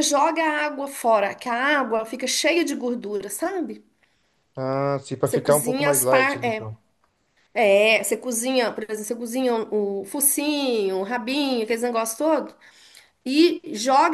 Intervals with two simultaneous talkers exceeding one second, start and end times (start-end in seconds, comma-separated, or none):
5.2-6.7